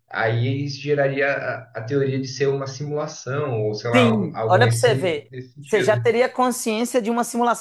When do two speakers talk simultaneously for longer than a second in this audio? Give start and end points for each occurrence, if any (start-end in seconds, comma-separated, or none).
3.9-6.0